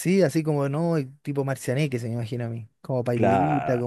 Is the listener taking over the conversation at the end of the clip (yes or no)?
yes